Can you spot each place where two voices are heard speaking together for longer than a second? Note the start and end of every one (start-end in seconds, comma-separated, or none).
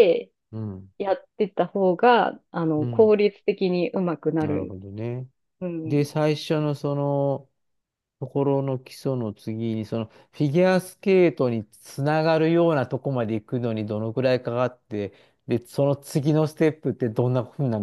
none